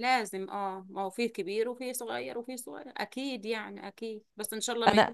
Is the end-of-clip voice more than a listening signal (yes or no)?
no